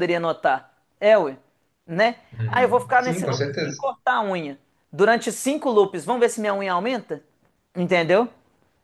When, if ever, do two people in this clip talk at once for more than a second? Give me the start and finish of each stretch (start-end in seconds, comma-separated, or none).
2.3-3.9